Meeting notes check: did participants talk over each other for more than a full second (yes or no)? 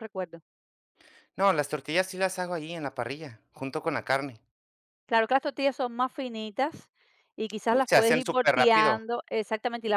yes